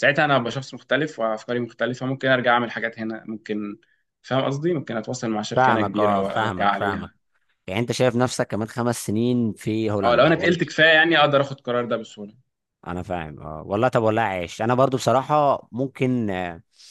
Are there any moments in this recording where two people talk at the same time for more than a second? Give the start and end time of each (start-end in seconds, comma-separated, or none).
5.5-7.1